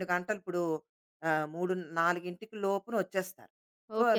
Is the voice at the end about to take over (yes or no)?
yes